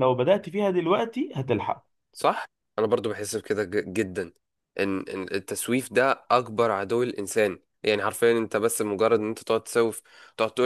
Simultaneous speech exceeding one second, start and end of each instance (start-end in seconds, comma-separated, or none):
none